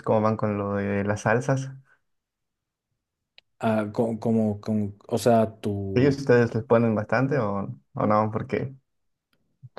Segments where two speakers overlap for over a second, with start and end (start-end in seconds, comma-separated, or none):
none